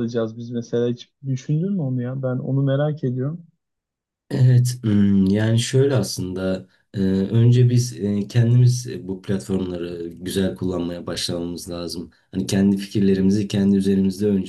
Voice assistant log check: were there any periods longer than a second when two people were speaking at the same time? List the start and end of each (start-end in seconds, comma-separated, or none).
none